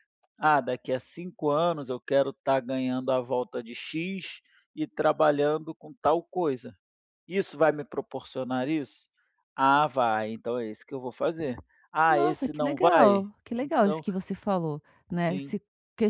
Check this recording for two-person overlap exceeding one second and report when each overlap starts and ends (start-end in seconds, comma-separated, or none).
12.1-14.0